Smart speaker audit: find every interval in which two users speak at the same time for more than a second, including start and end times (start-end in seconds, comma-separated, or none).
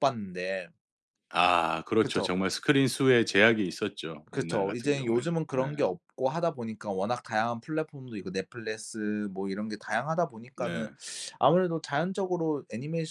4.3-5.7